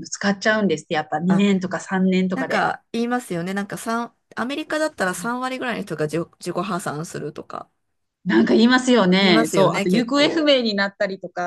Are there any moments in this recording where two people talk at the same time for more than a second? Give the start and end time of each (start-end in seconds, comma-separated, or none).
9.2-10.5